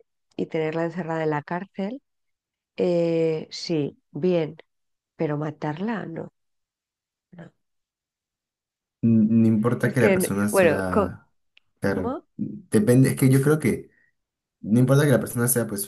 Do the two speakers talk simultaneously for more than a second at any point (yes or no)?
yes